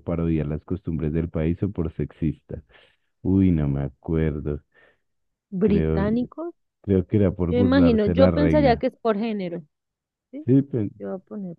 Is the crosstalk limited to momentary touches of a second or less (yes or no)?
no